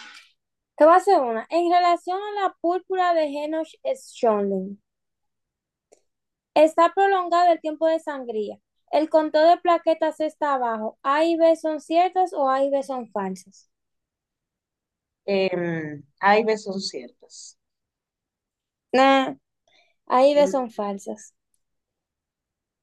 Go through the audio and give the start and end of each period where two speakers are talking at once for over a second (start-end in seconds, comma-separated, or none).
none